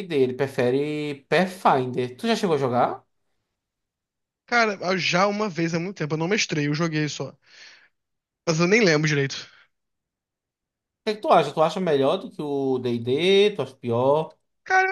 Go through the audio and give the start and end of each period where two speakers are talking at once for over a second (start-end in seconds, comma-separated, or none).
none